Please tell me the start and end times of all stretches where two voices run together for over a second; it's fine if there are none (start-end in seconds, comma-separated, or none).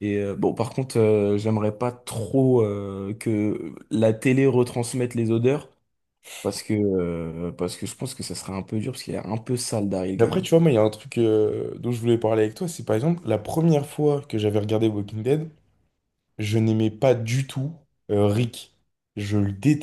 none